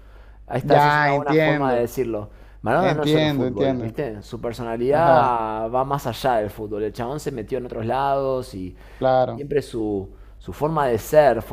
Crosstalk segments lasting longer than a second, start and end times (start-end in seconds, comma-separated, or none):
0.6-1.9, 2.8-4.0